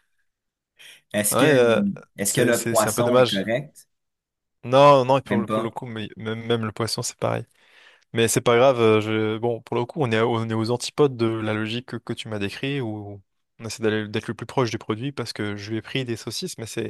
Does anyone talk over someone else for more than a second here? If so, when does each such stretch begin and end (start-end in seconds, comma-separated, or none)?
2.2-3.4